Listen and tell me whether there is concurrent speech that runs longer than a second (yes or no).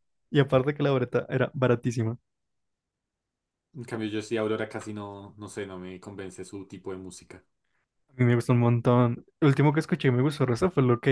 no